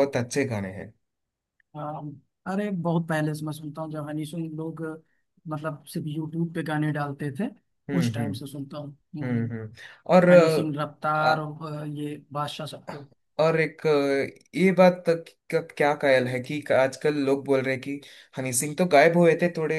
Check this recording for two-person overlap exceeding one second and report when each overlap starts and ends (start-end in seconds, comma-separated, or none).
none